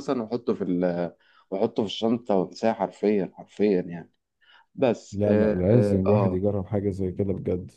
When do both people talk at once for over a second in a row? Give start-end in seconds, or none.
5.1-6.4